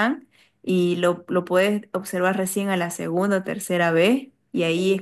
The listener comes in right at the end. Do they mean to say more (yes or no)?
no